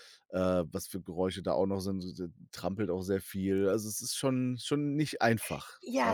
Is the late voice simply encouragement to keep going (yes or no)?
no